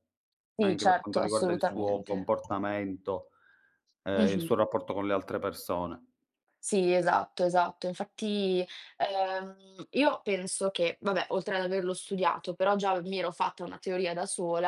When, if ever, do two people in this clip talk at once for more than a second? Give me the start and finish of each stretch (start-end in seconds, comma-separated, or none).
0.6-2.3